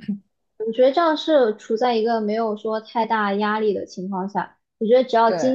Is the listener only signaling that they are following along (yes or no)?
yes